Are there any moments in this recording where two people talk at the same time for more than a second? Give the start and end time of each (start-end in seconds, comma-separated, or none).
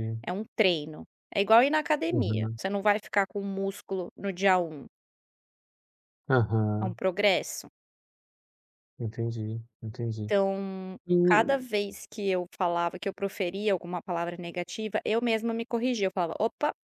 none